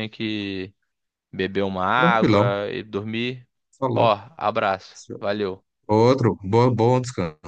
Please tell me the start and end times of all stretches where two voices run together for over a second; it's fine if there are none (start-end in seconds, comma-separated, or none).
none